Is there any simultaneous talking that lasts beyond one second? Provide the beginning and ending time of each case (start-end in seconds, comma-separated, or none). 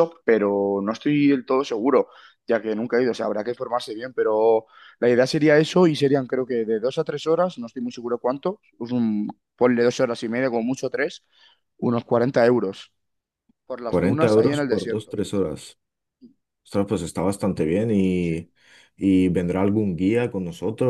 13.8-15.2